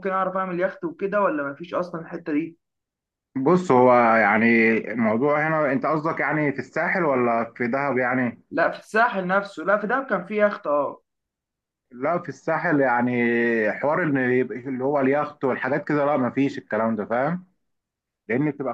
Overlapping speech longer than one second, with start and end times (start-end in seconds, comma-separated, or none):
none